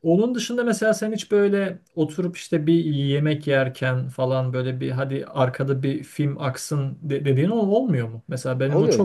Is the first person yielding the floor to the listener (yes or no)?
yes